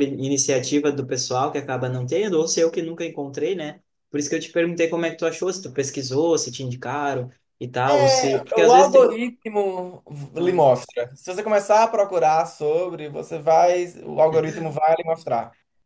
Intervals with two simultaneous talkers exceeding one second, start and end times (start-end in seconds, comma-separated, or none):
7.9-9.2